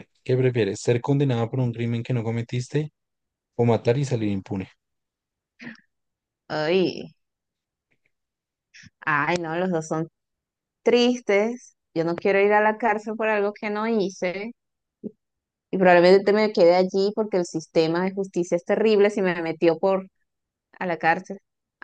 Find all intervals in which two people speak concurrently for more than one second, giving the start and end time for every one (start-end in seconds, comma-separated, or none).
none